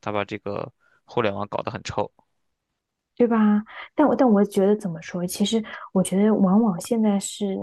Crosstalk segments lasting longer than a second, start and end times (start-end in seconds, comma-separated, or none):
none